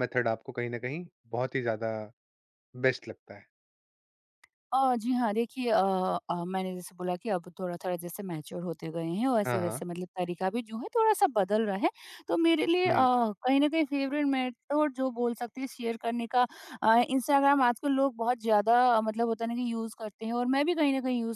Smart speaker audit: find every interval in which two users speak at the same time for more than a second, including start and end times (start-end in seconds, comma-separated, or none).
none